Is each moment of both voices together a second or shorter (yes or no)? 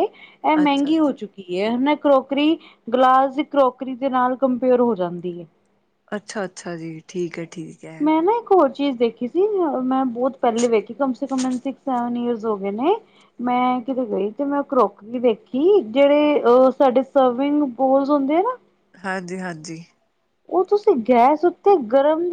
yes